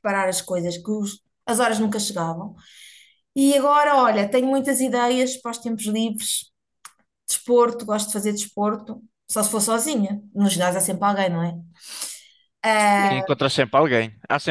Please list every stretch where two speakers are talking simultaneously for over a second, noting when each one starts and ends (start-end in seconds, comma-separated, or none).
none